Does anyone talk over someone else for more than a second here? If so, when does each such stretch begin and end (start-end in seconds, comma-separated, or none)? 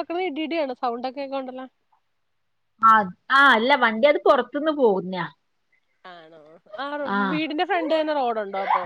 none